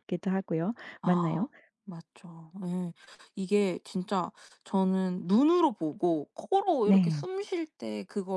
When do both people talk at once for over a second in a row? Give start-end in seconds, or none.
none